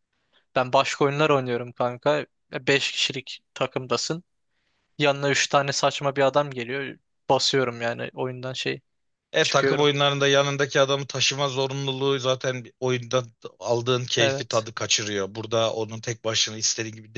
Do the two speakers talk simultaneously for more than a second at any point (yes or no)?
no